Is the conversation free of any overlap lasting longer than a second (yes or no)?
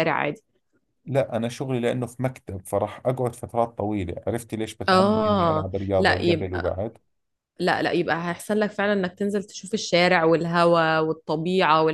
no